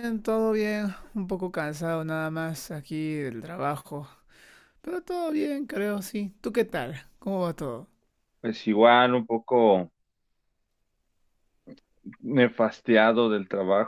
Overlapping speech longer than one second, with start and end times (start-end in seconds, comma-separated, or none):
none